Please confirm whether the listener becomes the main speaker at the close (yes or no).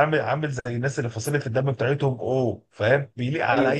no